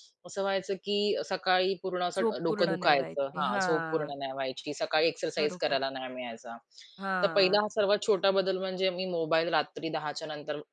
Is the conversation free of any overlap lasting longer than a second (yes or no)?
no